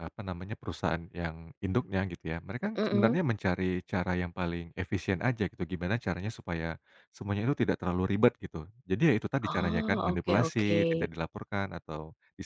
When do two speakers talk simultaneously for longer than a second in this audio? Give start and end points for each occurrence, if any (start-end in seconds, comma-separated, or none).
9.5-10.8